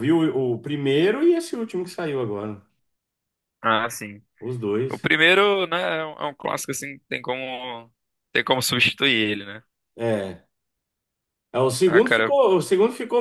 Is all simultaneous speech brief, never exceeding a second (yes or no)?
yes